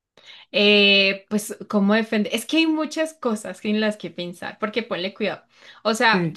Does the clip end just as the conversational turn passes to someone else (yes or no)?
no